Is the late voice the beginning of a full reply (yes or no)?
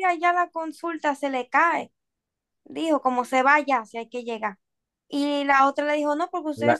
no